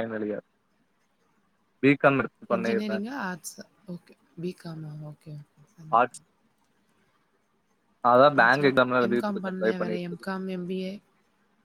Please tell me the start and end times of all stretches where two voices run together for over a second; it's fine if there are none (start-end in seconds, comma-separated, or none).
8.4-10.3